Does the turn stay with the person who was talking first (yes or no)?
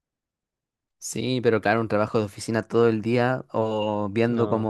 yes